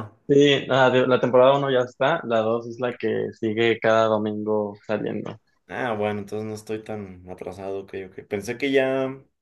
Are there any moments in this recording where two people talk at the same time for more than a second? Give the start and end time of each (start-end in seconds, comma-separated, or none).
none